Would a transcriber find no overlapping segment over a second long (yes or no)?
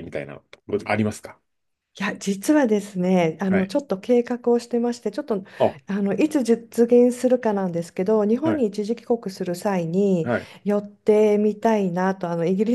yes